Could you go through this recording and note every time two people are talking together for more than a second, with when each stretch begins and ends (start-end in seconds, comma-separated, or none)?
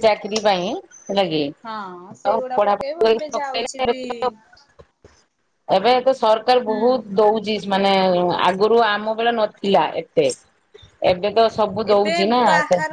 2.3-3.9